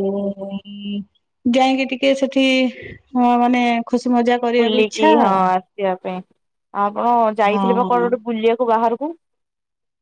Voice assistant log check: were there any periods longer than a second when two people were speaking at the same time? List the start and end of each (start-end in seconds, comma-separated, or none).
none